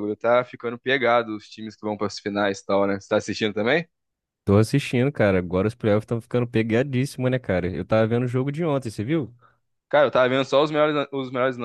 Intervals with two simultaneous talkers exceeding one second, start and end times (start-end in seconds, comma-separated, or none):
none